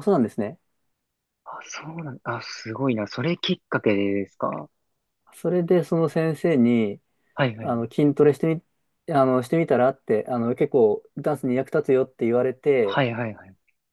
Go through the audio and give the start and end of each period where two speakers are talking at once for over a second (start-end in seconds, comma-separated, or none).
none